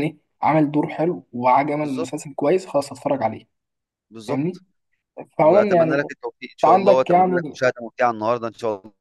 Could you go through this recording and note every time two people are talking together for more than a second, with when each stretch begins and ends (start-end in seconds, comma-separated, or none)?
5.4-7.6